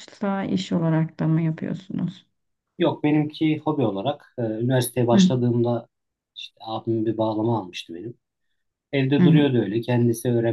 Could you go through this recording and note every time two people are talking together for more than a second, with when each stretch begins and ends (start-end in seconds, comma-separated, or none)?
none